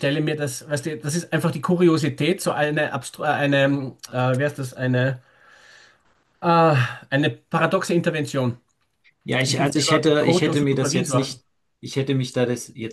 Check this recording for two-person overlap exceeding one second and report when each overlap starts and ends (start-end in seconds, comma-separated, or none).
9.4-11.4